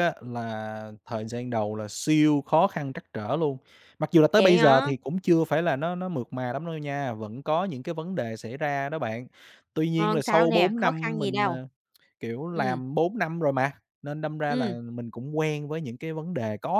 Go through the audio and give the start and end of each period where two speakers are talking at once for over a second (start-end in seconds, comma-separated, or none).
9.9-11.5